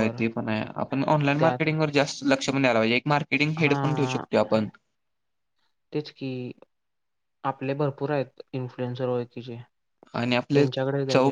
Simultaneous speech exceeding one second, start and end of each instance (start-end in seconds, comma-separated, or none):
none